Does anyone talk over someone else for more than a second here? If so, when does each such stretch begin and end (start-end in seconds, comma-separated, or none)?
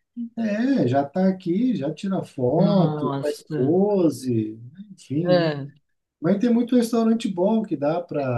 2.5-3.7